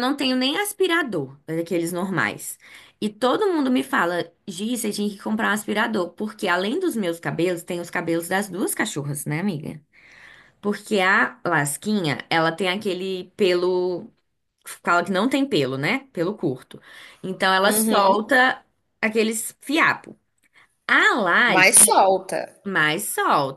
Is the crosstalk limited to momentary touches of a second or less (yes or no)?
yes